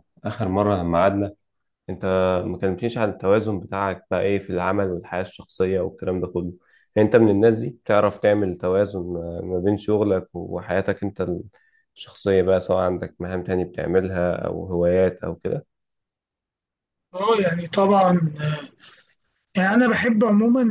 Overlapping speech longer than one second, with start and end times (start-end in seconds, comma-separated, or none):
none